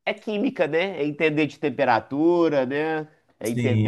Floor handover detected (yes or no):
yes